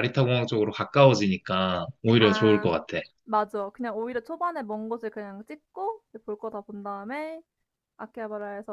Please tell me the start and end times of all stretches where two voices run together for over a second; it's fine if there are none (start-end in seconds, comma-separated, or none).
none